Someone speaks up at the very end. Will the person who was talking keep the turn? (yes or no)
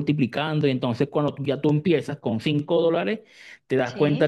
yes